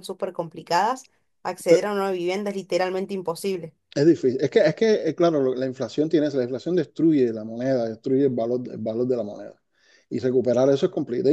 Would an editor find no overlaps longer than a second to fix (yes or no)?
yes